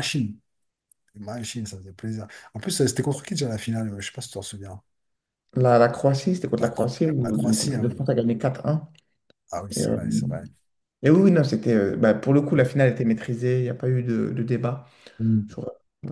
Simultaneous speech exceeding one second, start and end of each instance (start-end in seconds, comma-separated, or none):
6.6-8.1